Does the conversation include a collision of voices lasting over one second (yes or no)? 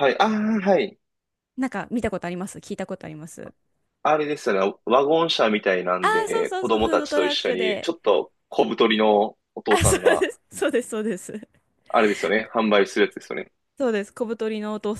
yes